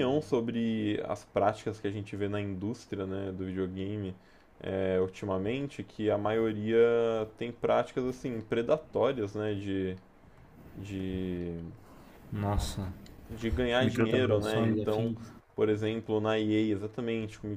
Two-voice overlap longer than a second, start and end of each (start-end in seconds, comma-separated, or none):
13.8-15.1